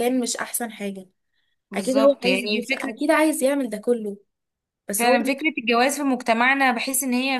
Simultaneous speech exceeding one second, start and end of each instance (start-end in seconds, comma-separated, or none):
1.7-2.9